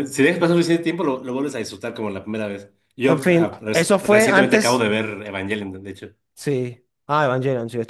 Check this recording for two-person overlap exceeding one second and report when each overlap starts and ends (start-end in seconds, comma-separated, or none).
3.1-4.8